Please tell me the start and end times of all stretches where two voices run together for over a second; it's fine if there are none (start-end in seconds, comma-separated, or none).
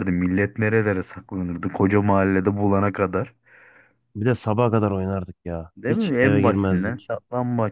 5.8-7.1